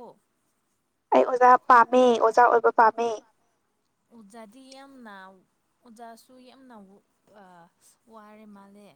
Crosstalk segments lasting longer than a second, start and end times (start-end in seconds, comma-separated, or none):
none